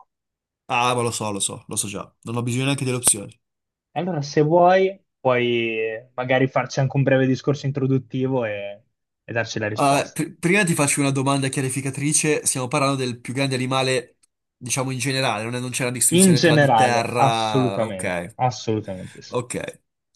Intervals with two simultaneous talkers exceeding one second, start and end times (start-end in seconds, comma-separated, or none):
16.1-18.4